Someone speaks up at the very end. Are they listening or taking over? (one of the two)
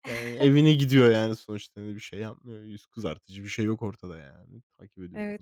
taking over